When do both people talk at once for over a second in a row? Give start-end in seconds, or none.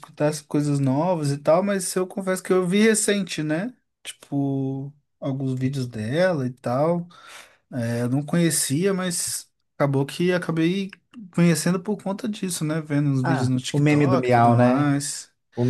13.2-14.9